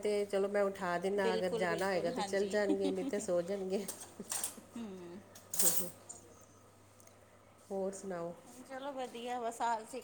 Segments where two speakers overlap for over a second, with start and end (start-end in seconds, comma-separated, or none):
1.2-2.6